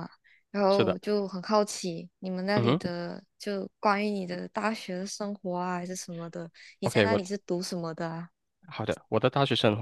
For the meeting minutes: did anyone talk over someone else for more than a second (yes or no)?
no